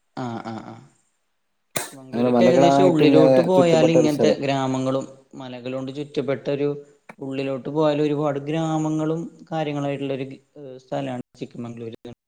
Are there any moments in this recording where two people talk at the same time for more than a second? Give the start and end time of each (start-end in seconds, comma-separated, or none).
2.1-4.4